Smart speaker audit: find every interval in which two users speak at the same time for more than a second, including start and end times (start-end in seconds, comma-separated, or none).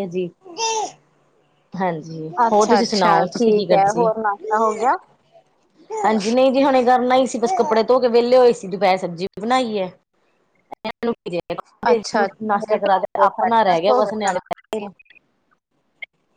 2.5-4.1, 12.5-14.3